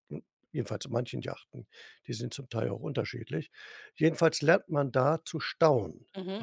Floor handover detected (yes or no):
yes